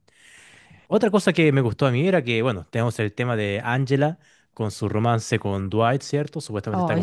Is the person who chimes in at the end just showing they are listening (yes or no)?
yes